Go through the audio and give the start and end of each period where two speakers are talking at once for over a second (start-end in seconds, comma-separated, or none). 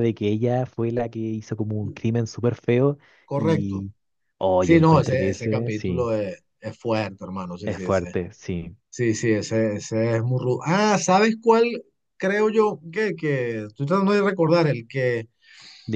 4.6-6.1